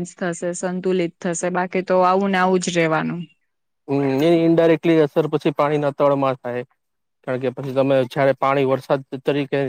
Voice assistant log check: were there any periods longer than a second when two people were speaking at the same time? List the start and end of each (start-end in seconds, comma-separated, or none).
none